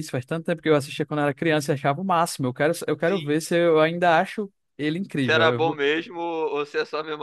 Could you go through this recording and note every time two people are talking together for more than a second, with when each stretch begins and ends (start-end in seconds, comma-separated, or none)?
none